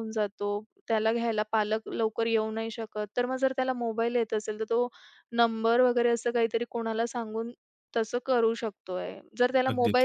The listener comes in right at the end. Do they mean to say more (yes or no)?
no